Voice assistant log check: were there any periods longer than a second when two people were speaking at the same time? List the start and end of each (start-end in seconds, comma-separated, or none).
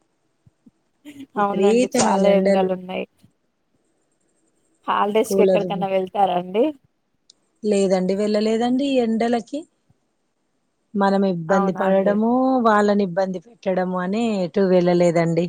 1.4-2.7